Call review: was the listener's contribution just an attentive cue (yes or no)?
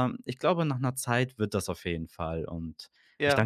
yes